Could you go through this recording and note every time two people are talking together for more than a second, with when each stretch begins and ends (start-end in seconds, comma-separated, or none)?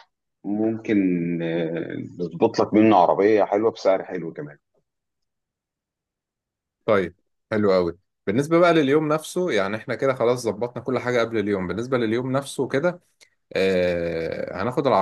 none